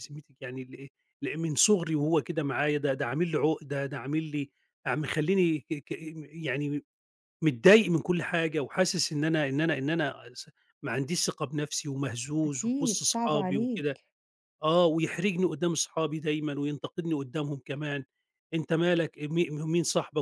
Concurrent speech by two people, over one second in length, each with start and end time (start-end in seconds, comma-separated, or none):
12.4-14.0